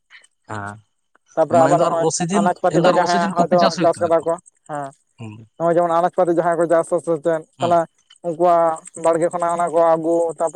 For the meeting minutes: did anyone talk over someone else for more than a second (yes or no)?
yes